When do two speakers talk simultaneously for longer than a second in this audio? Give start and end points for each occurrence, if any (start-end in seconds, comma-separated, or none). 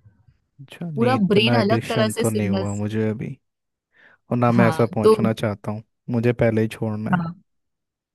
0.9-2.8